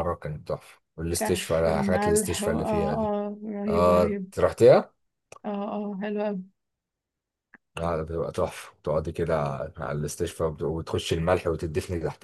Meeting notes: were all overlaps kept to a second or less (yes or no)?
no